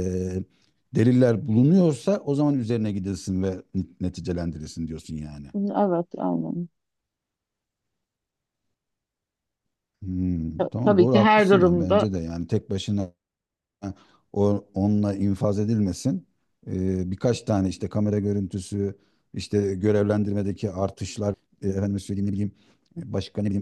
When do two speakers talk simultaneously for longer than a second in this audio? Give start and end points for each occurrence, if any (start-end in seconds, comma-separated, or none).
10.6-12.1